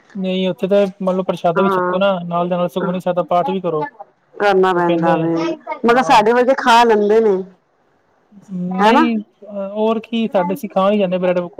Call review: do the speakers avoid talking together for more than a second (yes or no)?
yes